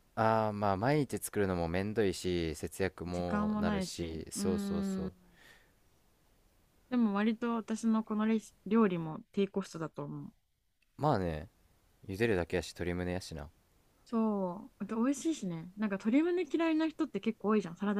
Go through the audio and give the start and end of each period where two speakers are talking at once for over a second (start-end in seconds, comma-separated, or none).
3.1-4.4